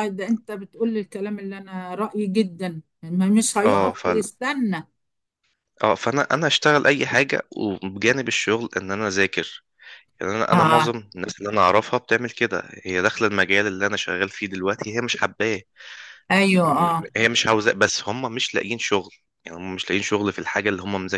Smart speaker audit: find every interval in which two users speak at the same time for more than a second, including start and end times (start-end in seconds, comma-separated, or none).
none